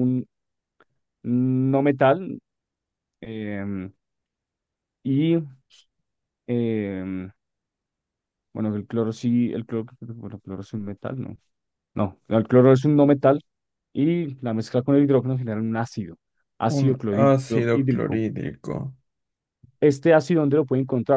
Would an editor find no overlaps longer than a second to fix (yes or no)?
no